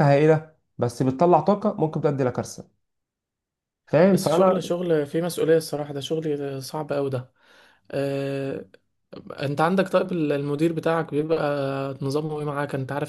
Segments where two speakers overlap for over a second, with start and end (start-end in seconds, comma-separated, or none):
none